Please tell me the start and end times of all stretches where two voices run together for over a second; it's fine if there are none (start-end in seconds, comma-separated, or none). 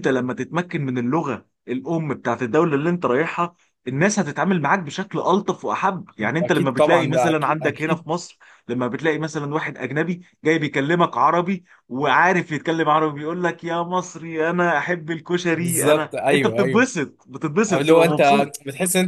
6.4-8.1, 15.5-16.9